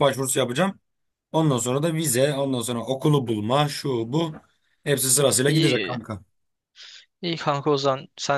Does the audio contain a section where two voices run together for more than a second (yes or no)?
no